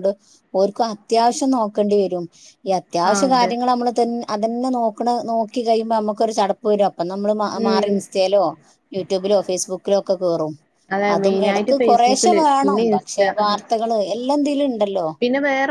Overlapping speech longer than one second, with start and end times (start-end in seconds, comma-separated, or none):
11.1-13.5